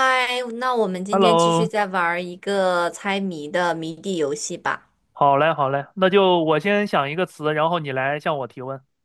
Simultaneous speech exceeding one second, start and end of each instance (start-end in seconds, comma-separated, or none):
none